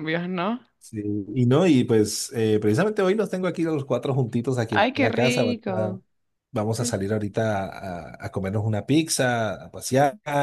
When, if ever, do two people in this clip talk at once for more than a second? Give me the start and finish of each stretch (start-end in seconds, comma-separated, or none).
4.7-6.0